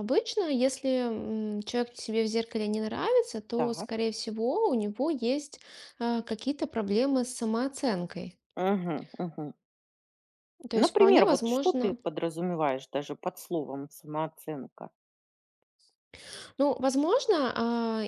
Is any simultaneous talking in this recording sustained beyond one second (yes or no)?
yes